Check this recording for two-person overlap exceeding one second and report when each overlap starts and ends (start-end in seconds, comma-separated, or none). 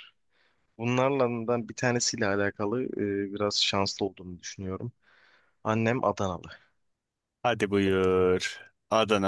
none